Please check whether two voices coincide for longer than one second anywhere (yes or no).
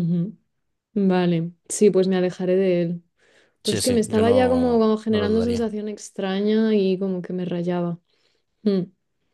yes